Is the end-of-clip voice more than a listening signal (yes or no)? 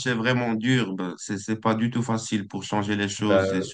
no